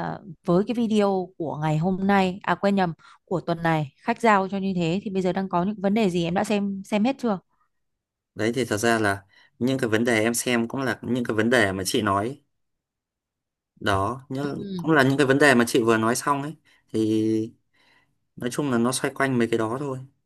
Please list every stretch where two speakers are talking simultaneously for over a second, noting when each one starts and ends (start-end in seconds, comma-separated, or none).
none